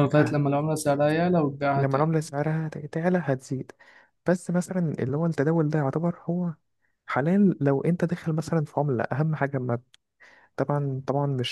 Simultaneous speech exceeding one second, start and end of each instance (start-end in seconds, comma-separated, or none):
none